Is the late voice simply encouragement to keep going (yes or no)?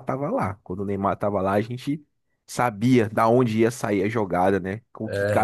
yes